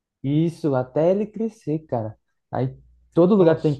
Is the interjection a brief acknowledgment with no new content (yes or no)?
yes